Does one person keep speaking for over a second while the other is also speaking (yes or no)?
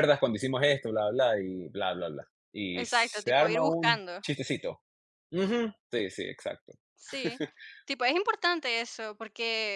yes